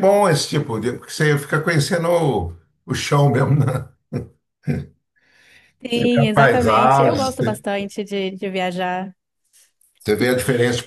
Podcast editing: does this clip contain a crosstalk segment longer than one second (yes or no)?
yes